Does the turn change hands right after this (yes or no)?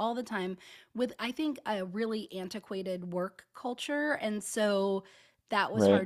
no